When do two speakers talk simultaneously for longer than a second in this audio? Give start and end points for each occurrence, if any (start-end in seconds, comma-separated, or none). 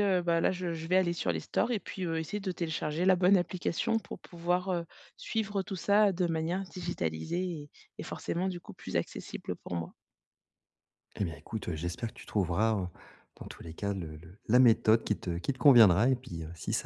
none